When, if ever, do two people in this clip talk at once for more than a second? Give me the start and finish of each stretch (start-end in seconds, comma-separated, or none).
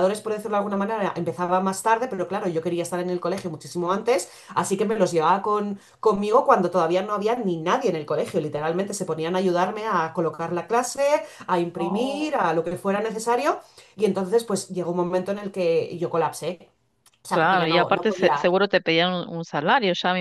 17.3-18.5